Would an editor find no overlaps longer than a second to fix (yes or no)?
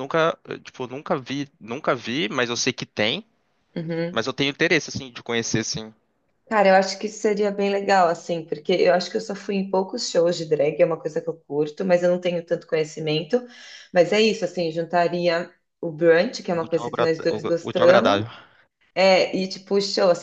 no